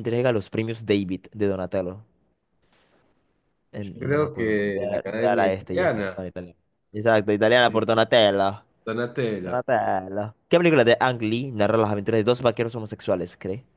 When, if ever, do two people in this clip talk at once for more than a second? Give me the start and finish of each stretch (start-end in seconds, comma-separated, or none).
3.8-6.2